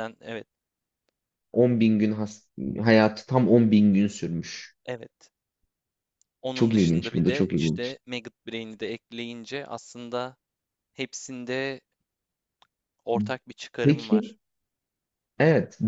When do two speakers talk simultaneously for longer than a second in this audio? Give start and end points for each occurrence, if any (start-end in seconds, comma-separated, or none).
6.5-7.9